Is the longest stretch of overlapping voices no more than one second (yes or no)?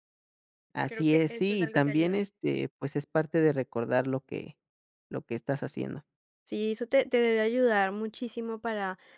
no